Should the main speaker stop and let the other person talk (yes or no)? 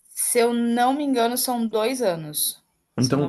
yes